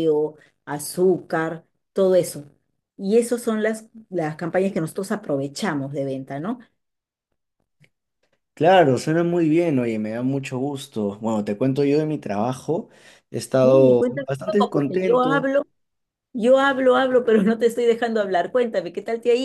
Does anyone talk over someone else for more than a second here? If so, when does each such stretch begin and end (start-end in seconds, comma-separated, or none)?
13.6-15.5